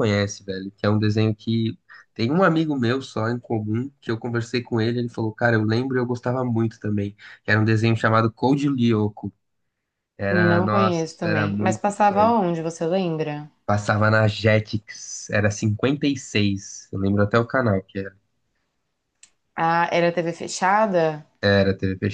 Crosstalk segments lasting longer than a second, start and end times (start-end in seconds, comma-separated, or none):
10.3-12.4